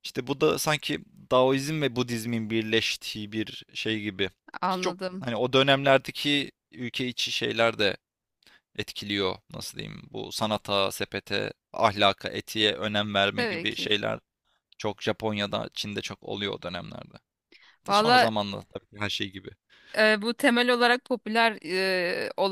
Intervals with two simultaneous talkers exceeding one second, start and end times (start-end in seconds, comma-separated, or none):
none